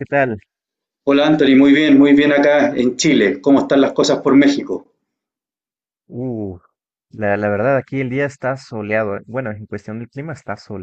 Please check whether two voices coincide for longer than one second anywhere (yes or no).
no